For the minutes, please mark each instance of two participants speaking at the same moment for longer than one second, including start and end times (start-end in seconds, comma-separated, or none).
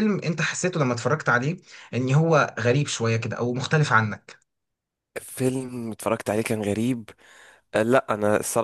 none